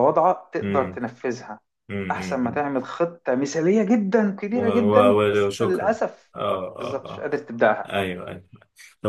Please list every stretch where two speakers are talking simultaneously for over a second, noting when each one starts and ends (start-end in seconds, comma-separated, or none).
4.5-6.0